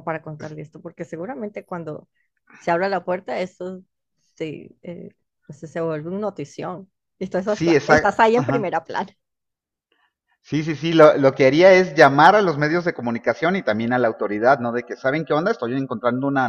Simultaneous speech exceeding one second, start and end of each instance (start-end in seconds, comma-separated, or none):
7.5-8.8